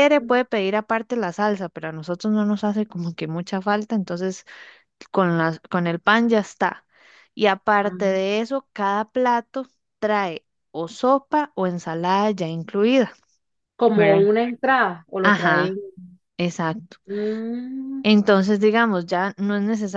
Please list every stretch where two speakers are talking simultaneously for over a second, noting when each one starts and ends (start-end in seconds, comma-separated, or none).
none